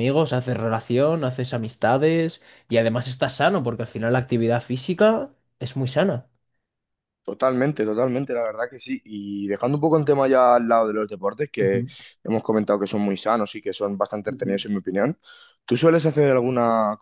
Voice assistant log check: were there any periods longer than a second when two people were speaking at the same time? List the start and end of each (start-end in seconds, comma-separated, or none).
none